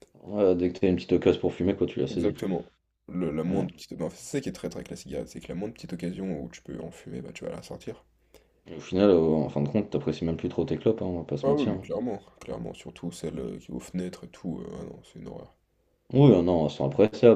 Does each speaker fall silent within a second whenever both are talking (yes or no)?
yes